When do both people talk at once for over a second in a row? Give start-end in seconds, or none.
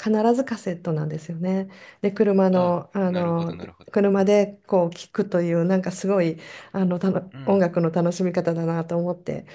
2.5-4.3